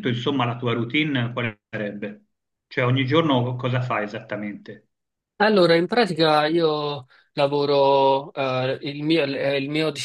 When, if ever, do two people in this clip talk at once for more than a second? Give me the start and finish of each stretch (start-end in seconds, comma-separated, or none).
none